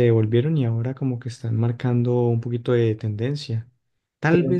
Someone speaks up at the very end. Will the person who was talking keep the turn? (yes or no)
yes